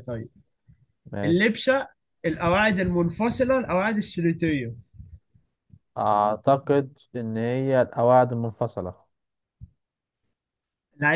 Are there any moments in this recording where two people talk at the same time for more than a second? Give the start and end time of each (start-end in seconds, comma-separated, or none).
none